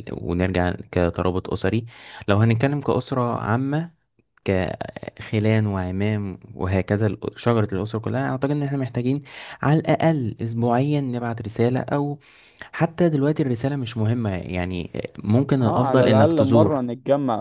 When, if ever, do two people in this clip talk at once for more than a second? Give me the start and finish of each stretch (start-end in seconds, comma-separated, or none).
15.6-16.8